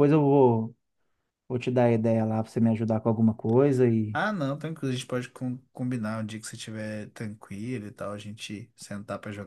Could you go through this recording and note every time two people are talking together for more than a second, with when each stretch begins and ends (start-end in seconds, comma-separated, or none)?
none